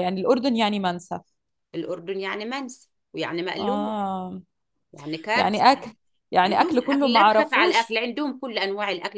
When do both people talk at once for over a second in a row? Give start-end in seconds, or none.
6.5-8.0